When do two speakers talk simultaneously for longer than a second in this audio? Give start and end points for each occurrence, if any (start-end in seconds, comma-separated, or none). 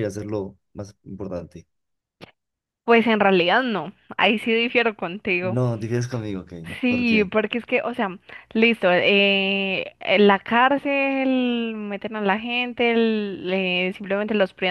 none